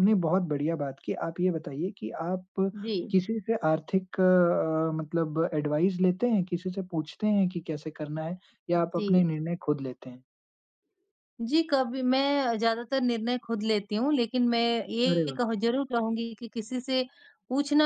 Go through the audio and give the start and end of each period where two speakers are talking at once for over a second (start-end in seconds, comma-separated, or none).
none